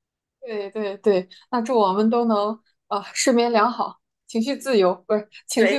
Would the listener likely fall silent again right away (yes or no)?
no